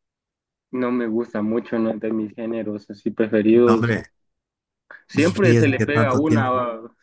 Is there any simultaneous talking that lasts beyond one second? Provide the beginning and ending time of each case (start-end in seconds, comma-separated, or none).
5.1-6.5